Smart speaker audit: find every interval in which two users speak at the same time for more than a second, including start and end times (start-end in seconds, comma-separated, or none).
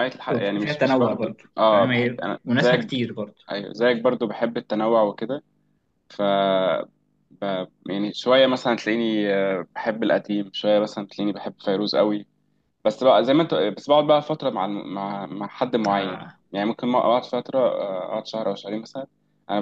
0.6-3.0